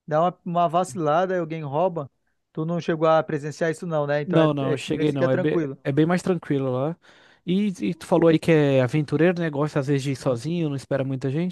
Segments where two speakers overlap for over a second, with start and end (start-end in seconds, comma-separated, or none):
4.2-5.8